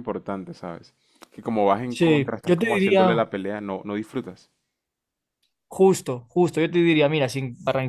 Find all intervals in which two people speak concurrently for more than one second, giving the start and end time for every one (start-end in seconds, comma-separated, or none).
1.9-3.2